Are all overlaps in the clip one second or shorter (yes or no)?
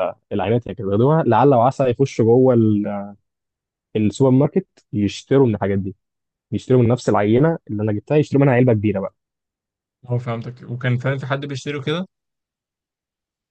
yes